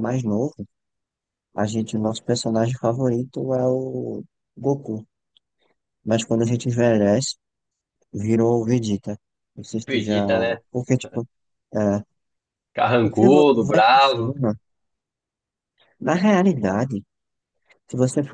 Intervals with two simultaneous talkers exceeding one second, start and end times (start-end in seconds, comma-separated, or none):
13.0-14.3